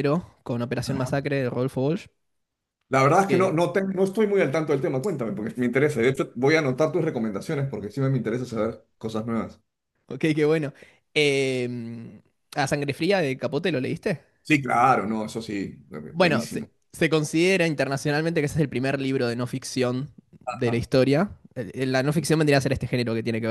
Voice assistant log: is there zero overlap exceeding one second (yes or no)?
yes